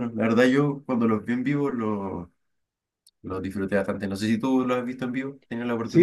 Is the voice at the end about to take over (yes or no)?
yes